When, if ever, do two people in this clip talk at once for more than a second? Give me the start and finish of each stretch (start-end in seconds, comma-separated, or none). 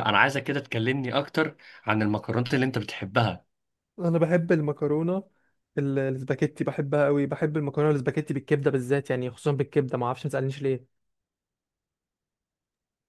none